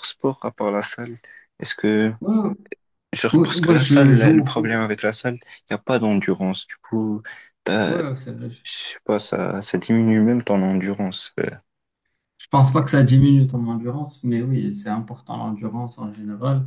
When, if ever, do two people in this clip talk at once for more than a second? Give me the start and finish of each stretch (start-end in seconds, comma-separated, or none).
3.3-4.8